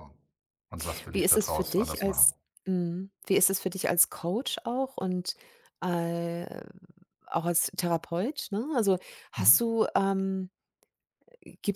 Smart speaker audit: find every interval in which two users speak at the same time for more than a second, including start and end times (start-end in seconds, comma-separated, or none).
1.1-2.3